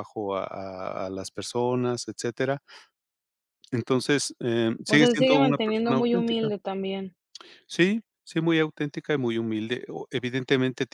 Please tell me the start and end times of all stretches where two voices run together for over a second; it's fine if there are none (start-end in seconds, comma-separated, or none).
4.9-6.5